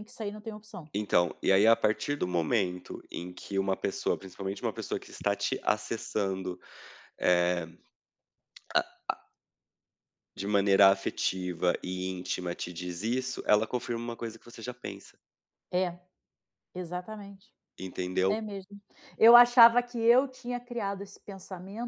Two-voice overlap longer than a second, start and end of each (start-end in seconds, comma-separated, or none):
none